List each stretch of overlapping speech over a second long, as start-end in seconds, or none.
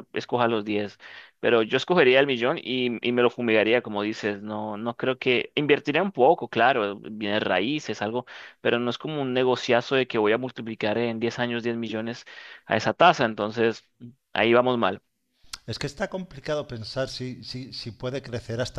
none